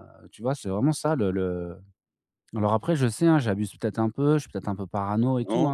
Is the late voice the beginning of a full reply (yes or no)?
yes